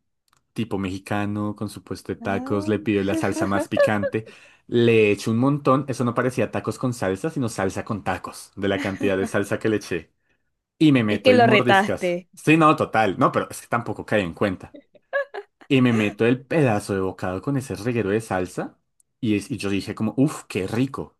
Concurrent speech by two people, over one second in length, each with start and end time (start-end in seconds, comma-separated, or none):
11.1-12.3